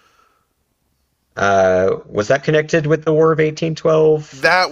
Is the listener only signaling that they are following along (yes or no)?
no